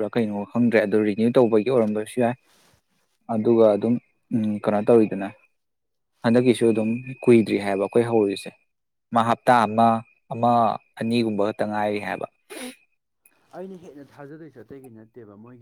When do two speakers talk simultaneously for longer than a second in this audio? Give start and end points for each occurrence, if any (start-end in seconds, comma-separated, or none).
none